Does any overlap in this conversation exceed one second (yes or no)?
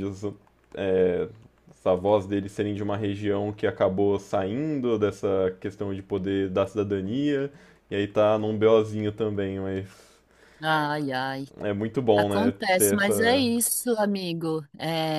yes